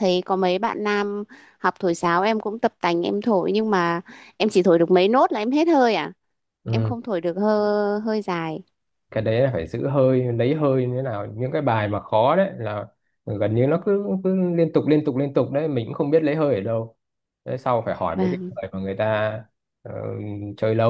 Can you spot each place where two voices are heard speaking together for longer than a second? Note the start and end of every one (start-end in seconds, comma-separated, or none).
none